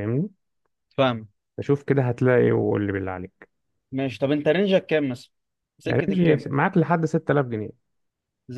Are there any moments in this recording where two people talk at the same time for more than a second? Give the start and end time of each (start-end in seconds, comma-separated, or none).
none